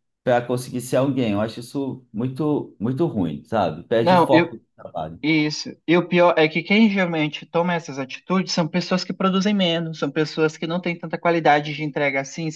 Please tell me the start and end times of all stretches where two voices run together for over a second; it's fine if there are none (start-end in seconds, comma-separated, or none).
none